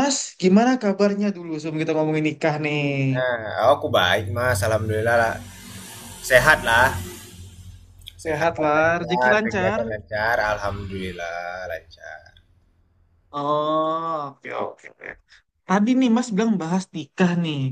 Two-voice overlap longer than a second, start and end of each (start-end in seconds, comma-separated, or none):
8.3-9.8